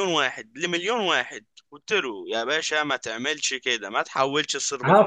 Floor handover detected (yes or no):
yes